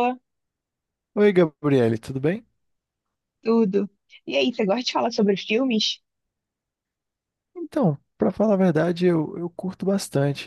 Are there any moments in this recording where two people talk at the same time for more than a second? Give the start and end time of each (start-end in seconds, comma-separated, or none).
none